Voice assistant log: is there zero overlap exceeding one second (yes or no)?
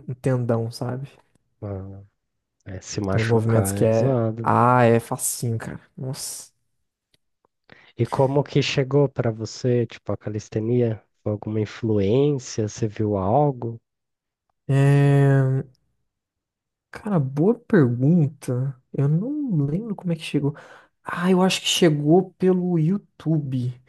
no